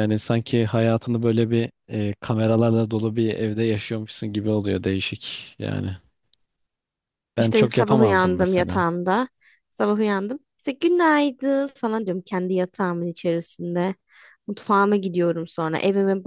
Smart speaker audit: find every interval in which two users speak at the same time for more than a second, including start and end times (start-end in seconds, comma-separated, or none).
7.4-8.8